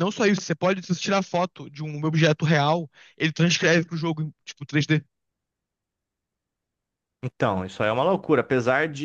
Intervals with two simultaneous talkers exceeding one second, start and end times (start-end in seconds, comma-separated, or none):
none